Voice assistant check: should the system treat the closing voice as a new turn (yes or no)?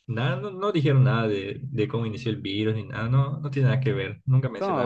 yes